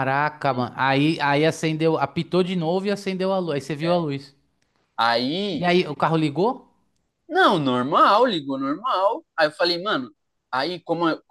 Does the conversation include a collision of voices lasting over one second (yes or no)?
no